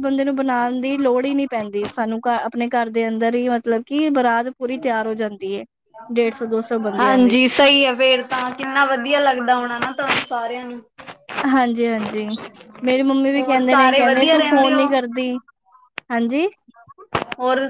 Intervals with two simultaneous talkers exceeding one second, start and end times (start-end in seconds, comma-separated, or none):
13.4-14.8